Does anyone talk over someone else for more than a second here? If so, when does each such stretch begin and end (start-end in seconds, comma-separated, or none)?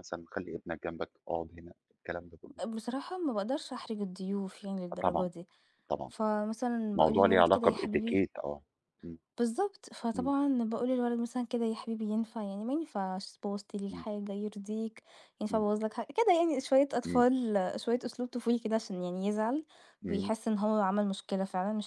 6.9-8.3